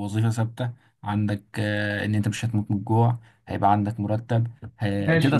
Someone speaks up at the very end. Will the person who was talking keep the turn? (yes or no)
no